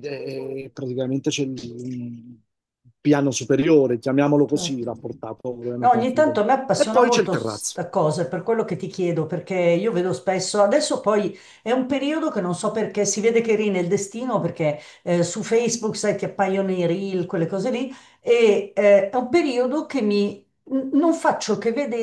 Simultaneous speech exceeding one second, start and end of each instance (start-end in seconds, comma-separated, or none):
5.8-7.8